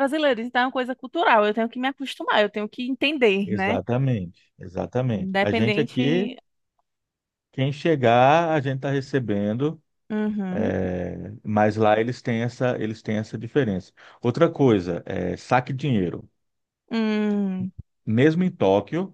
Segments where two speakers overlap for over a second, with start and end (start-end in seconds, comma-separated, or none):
5.1-6.3